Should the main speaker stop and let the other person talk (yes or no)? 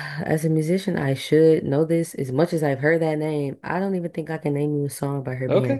yes